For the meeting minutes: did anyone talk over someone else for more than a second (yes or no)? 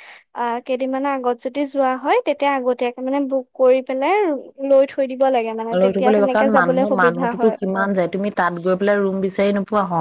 yes